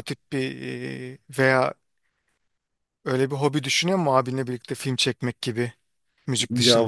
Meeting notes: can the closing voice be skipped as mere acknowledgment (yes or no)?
no